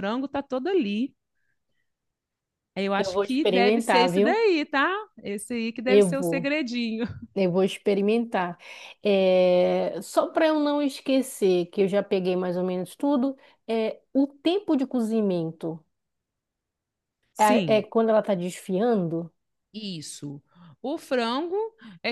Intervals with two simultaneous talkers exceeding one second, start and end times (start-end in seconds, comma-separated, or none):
3.0-4.4